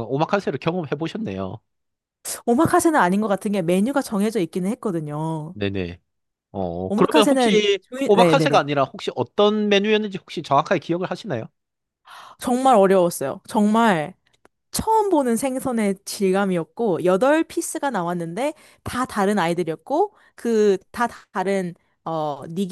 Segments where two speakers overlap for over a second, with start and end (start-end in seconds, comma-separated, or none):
6.9-8.7